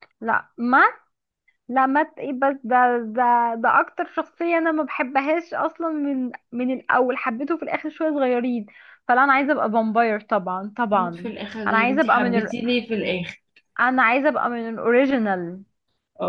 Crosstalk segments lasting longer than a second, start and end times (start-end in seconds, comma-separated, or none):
10.9-12.5